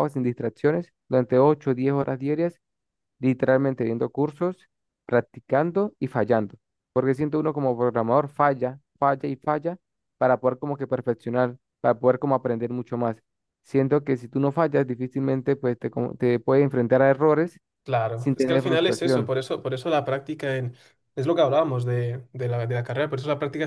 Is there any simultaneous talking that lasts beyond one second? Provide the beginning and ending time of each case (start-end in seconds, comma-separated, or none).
18.1-19.3